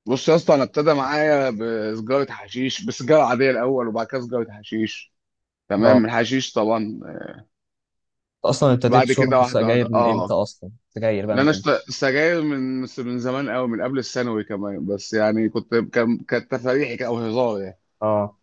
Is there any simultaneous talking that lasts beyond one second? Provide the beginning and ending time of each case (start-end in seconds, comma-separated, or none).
8.9-10.3